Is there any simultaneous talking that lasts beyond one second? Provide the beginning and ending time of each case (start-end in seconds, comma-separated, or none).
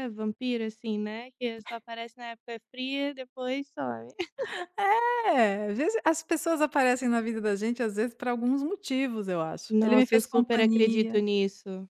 9.7-11.2